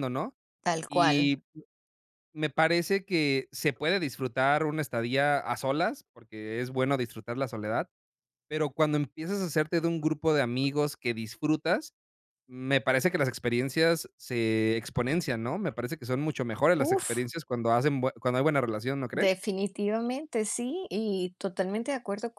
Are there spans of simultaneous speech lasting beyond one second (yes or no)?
no